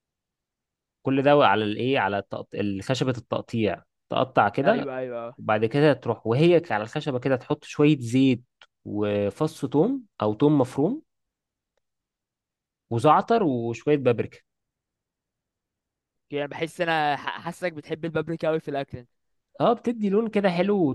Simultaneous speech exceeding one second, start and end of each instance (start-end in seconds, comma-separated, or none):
none